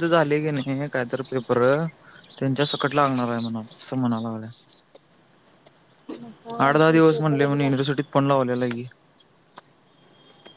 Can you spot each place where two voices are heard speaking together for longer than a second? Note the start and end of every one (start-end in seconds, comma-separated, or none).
6.7-8.0